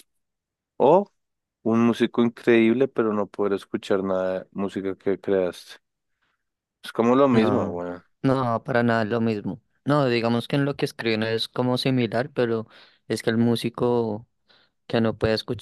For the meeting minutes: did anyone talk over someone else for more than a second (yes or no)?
no